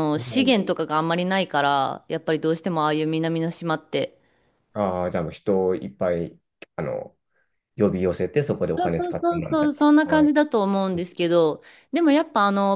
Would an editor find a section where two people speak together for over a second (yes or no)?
yes